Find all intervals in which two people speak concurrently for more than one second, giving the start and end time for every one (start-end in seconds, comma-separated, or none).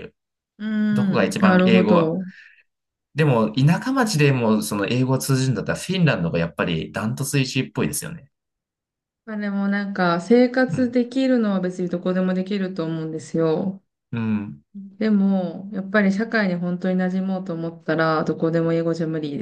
0.9-2.1